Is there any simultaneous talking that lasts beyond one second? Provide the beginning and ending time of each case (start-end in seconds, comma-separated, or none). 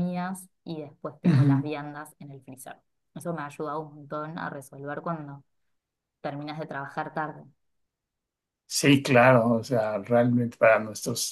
none